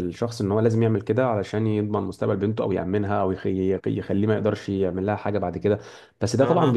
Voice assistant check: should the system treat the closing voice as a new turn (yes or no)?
no